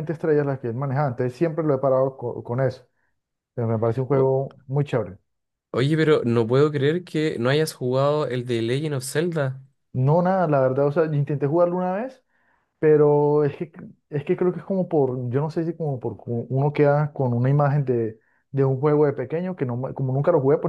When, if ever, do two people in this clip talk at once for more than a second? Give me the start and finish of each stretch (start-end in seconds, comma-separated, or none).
none